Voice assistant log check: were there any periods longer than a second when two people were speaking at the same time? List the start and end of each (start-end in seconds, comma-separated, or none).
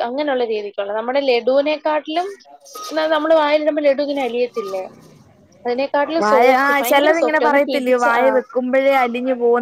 6.2-8.2